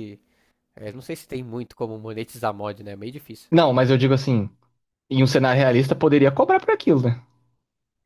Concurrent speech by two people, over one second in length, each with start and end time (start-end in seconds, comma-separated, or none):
none